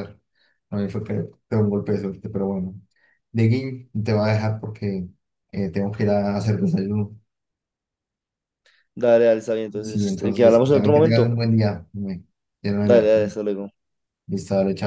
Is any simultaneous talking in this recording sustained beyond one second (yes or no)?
yes